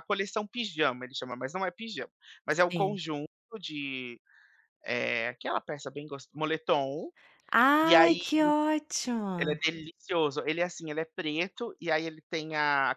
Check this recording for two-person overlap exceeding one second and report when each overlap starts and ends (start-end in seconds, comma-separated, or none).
none